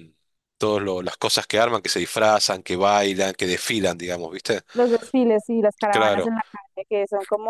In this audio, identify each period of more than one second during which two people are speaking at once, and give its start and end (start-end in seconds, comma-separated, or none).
none